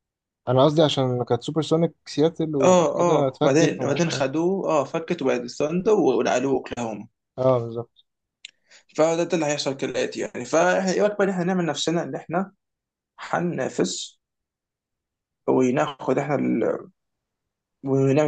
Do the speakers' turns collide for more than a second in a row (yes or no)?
yes